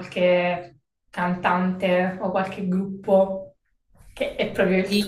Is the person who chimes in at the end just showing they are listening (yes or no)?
no